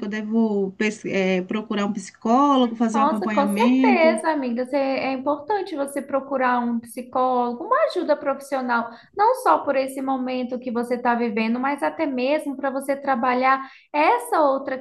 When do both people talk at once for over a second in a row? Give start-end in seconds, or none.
2.9-4.2